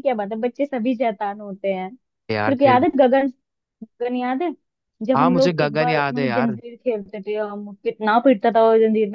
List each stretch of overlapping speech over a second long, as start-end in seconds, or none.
5.1-6.6